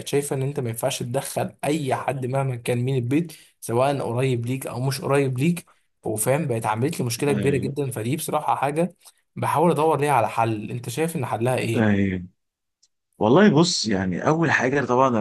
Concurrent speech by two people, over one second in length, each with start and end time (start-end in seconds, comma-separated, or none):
none